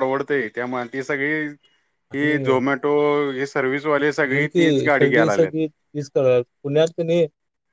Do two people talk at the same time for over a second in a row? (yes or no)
yes